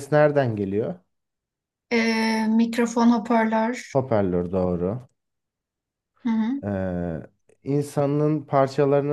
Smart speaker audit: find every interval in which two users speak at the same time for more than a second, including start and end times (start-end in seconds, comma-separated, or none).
none